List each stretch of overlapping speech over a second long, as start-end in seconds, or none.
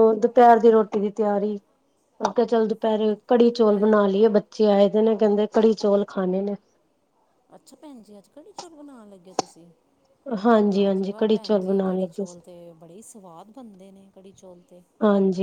10.7-12.4